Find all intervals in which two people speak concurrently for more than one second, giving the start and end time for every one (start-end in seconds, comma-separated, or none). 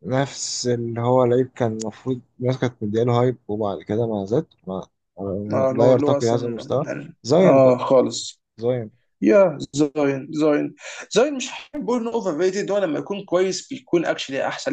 5.5-7.9